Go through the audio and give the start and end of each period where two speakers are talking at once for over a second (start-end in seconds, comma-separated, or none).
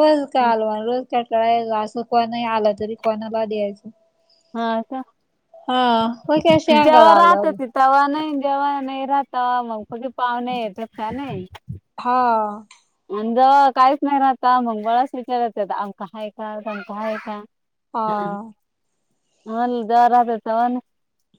none